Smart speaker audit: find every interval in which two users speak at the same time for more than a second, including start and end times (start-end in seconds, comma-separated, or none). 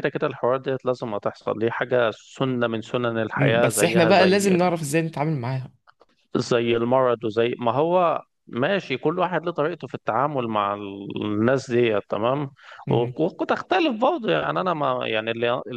3.3-4.6